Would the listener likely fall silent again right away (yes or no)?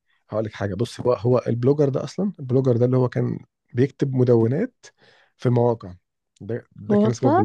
yes